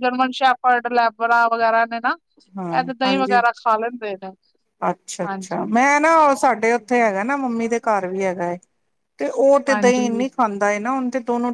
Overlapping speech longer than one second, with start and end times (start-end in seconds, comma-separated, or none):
none